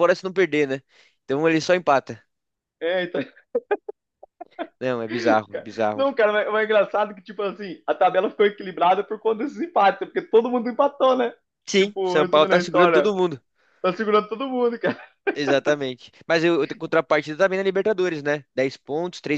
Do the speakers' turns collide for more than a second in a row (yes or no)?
yes